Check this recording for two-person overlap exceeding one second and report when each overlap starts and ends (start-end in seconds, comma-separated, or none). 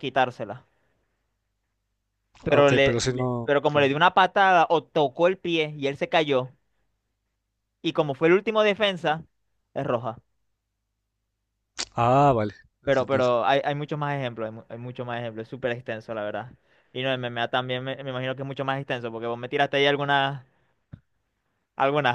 2.5-4.0